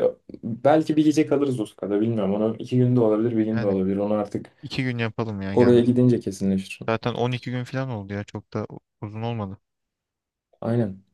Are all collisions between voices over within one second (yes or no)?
yes